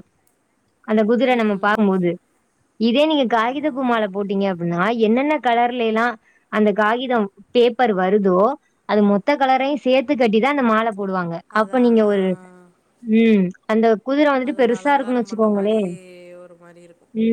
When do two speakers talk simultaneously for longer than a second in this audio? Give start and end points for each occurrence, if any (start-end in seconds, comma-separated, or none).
14.5-15.8